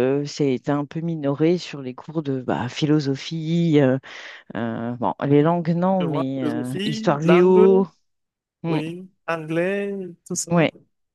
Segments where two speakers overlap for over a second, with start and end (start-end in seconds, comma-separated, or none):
6.0-7.8